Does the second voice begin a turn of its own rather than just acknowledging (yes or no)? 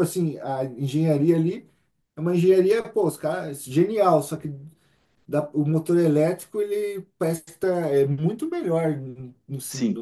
yes